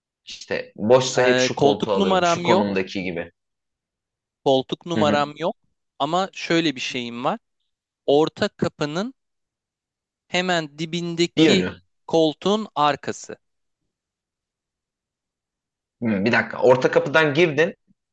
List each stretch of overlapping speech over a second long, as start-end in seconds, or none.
1.2-2.6